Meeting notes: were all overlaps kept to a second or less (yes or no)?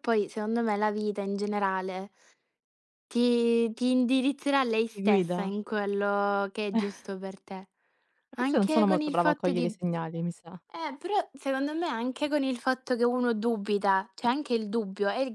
no